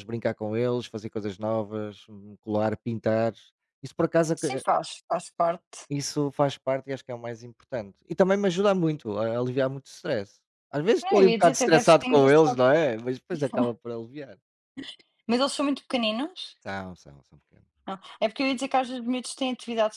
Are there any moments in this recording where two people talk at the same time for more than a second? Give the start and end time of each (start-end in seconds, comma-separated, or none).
11.0-12.6